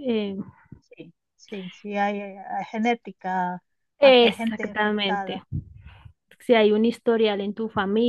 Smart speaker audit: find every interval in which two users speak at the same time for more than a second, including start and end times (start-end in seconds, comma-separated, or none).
4.0-5.4